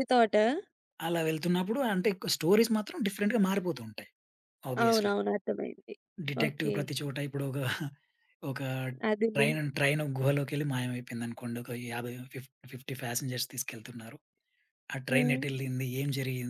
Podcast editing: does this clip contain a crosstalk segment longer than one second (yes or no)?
no